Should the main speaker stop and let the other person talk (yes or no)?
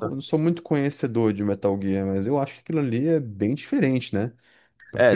yes